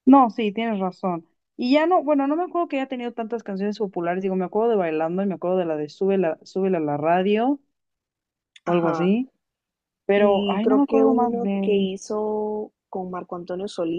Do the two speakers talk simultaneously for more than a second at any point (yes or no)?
yes